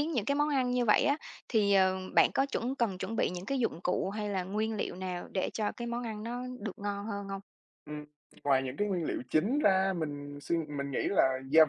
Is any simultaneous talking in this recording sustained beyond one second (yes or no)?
no